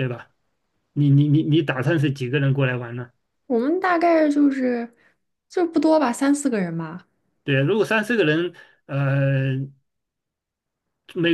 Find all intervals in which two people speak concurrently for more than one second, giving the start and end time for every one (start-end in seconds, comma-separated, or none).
none